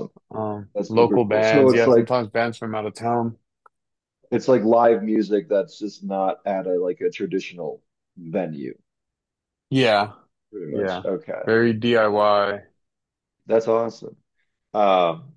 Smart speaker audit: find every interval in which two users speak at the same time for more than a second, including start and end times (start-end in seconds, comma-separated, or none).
0.7-2.1